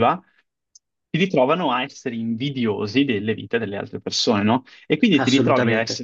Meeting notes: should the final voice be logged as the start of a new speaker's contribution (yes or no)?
no